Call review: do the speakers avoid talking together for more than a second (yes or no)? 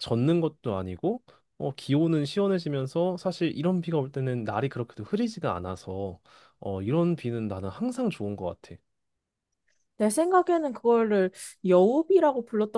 yes